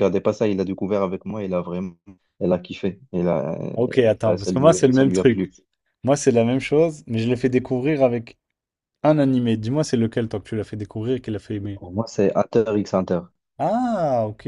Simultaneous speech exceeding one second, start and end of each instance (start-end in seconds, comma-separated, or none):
4.2-5.5